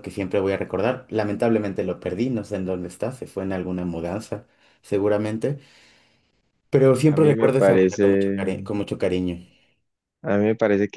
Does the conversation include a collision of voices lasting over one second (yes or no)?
yes